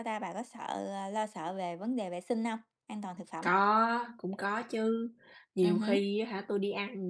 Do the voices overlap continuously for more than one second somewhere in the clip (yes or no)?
no